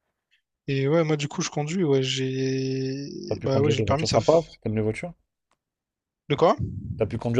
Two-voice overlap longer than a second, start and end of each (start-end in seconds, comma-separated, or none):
3.3-4.5